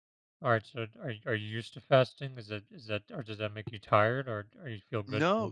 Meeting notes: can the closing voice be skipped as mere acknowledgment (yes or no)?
no